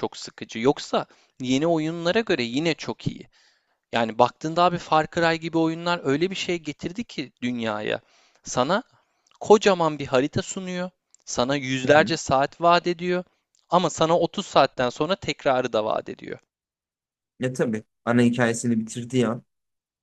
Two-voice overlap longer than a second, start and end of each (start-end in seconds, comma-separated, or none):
none